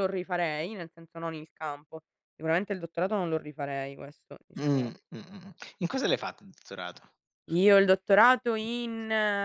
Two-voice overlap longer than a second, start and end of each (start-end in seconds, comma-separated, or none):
none